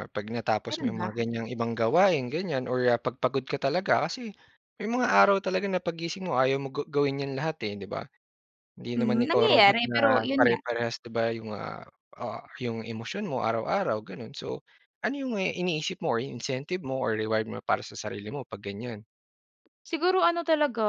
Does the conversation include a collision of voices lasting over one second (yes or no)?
yes